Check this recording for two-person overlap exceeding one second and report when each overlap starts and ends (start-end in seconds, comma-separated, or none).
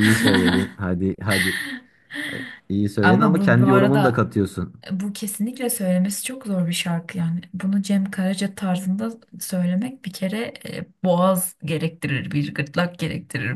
3.0-4.2